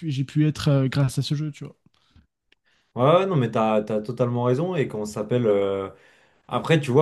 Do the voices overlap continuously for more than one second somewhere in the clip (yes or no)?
no